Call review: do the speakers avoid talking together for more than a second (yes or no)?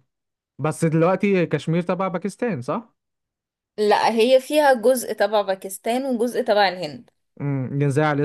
yes